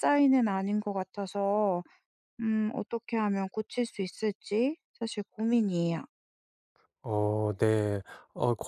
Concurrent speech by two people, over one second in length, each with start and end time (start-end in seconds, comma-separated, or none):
none